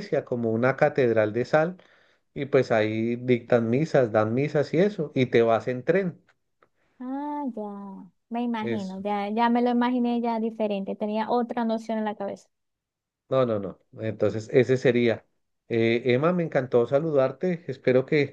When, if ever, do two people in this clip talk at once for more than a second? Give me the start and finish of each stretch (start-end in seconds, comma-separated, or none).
none